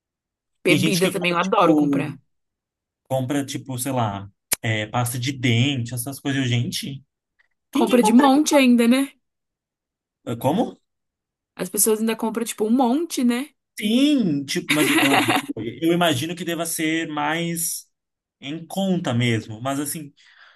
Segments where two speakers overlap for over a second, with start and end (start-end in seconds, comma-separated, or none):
0.7-2.0